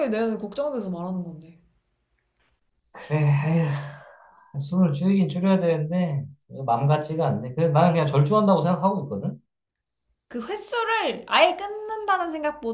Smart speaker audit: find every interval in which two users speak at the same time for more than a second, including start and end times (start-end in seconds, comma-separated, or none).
none